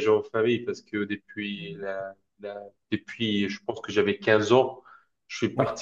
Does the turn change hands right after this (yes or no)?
no